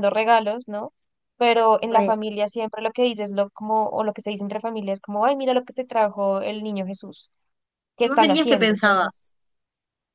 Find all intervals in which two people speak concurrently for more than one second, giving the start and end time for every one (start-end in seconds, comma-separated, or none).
8.0-9.2